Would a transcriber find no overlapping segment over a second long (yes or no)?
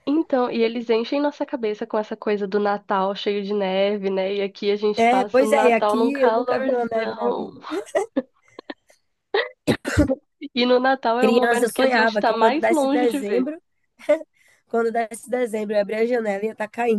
no